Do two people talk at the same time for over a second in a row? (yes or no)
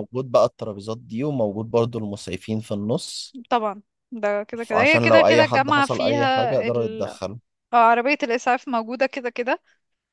yes